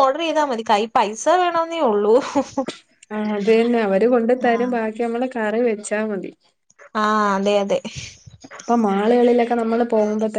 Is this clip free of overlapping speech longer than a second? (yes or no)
yes